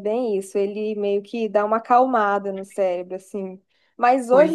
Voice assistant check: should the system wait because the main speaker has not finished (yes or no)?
yes